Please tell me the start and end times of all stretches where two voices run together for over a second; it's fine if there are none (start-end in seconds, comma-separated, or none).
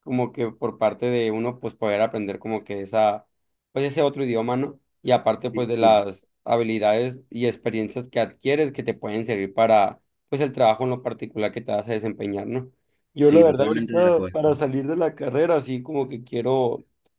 13.2-14.4